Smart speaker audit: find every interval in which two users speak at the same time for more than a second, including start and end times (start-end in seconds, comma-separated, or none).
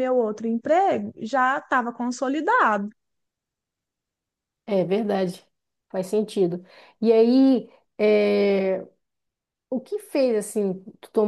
none